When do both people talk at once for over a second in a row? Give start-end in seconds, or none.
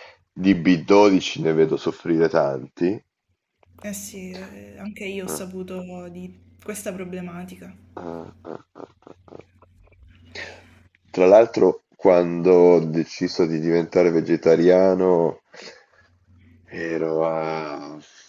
none